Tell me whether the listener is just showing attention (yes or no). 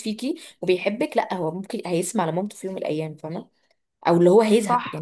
yes